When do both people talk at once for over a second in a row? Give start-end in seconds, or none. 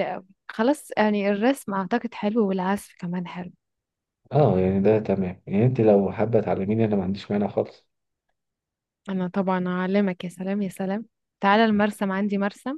none